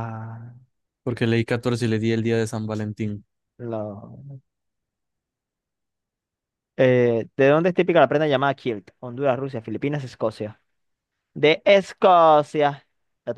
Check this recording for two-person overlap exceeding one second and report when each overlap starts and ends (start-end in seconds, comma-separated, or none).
none